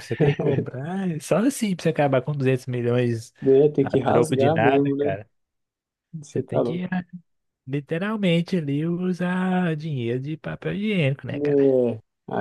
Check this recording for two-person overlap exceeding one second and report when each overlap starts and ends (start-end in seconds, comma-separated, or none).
3.8-5.2